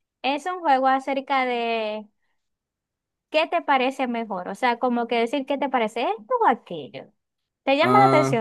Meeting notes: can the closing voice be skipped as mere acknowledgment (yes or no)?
no